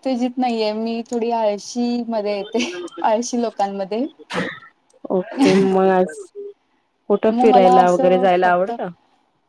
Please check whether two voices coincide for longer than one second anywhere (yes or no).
yes